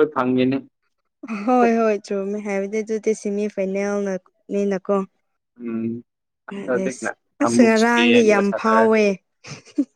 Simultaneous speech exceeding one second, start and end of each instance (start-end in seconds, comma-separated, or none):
7.4-9.0